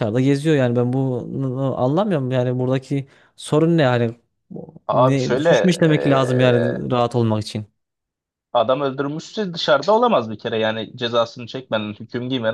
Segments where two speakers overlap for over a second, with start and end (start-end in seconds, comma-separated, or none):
4.8-6.8